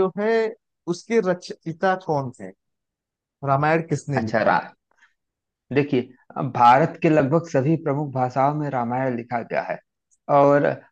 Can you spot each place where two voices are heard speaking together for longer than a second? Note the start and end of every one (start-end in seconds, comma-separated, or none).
none